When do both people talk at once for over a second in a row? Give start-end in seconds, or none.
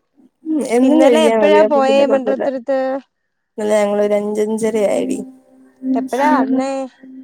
0.9-2.5